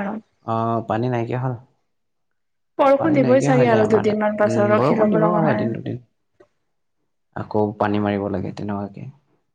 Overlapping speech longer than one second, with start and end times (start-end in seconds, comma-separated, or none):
3.0-5.4